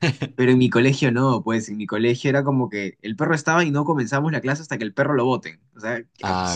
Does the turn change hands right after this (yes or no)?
no